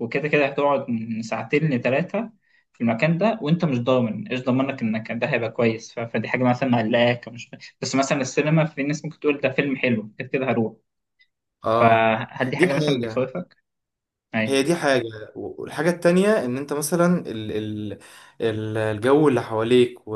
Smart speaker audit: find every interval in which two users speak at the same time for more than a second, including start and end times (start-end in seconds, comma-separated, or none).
none